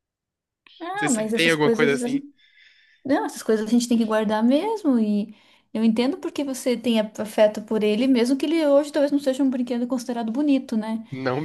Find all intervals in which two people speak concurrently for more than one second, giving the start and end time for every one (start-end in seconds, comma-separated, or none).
0.9-2.2